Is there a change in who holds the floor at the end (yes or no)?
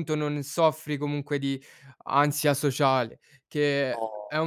no